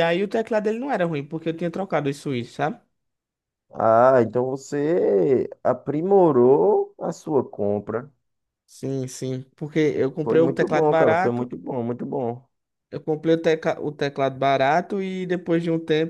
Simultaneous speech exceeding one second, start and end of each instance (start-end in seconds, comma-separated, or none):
10.2-11.5